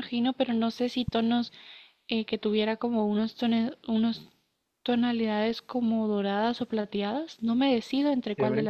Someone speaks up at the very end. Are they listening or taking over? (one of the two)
taking over